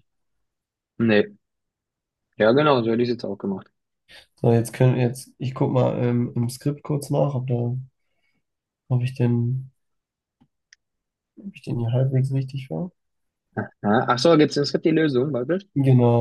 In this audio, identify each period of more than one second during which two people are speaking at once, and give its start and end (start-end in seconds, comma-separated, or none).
none